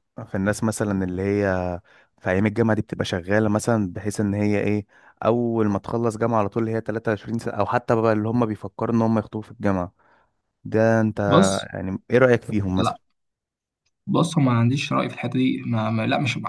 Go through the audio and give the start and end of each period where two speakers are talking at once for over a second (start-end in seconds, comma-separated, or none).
none